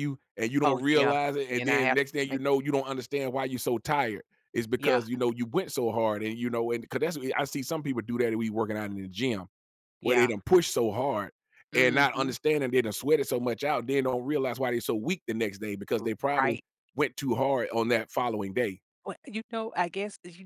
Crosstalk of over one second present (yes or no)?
yes